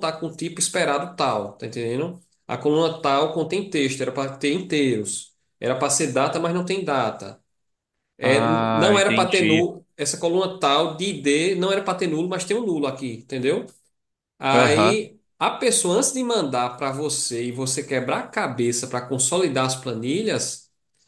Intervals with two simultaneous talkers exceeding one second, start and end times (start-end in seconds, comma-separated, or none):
8.2-9.7